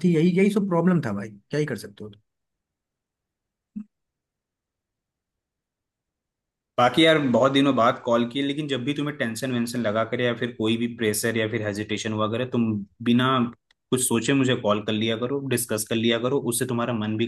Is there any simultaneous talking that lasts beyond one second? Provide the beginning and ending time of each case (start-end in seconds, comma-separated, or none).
none